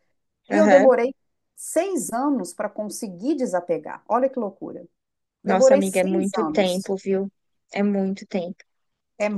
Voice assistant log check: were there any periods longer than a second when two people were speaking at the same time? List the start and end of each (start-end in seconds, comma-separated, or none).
5.5-6.9